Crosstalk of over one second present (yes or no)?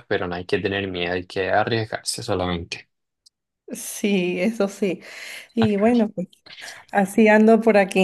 no